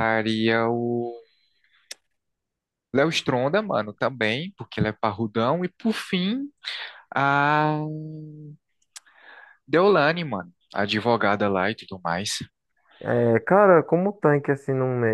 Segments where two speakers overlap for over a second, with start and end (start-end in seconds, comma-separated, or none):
none